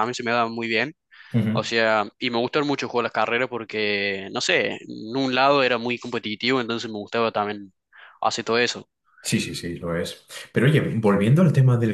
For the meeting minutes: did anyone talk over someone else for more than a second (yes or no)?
no